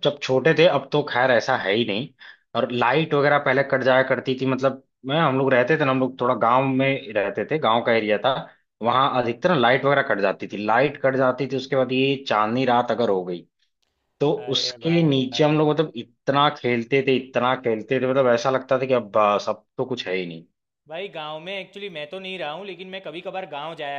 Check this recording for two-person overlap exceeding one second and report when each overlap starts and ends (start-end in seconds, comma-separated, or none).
14.4-15.7